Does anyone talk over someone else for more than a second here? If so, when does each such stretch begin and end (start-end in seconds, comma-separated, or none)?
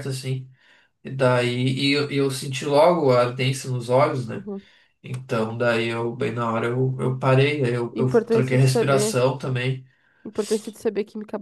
7.9-9.2